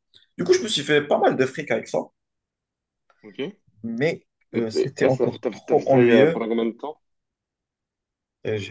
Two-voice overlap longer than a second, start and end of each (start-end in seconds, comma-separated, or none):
4.7-6.4